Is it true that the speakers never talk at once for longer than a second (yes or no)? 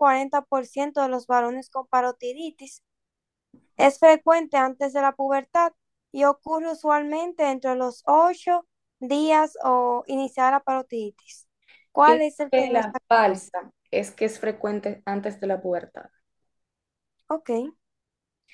no